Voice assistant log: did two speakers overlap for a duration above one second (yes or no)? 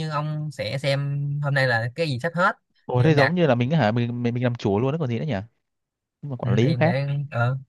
no